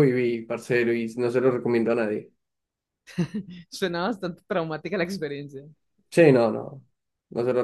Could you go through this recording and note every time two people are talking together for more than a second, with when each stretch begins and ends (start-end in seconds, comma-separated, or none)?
none